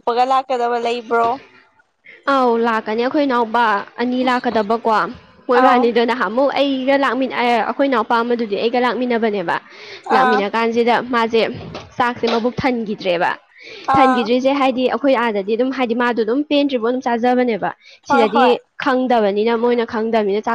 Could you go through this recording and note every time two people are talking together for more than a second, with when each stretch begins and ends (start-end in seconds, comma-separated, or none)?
none